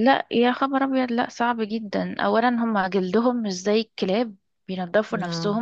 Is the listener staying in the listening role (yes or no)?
yes